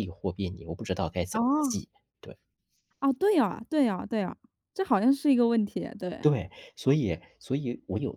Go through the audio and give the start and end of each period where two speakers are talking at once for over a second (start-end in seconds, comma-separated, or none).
none